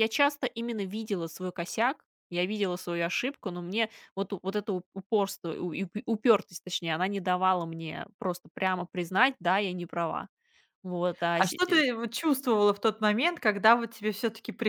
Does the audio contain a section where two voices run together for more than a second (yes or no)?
no